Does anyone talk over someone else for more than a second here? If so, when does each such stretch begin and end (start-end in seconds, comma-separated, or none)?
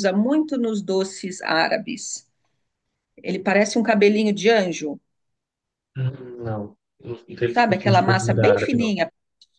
7.5-8.9